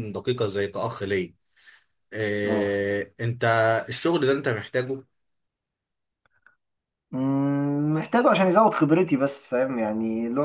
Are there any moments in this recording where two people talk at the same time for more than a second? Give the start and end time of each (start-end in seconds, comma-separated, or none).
none